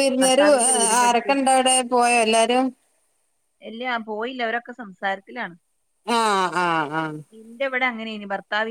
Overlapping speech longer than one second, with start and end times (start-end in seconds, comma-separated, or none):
none